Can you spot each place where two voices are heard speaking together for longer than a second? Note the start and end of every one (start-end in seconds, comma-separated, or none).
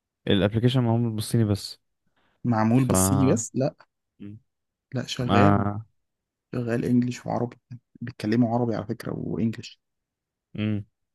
none